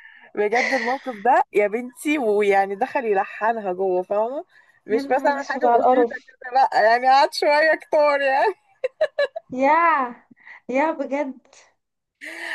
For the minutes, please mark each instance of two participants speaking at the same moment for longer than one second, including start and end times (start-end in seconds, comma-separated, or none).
4.9-6.3